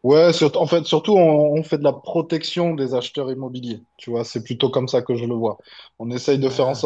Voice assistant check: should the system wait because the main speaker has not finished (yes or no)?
yes